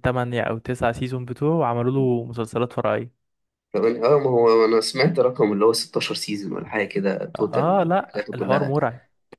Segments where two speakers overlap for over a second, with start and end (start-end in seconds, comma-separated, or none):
7.4-8.7